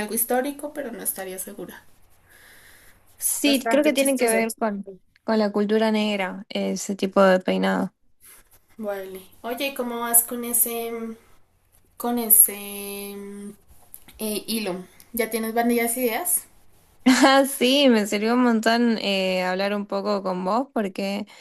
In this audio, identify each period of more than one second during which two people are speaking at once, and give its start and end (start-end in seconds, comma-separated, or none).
3.2-4.5